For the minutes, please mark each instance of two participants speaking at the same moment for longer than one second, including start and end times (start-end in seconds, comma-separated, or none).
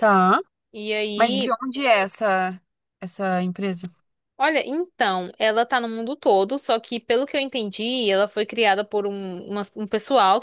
none